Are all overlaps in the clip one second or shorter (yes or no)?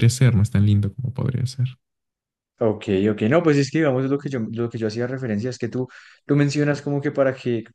yes